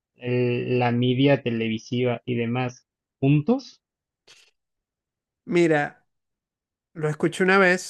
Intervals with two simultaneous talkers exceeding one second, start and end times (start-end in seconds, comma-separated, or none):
none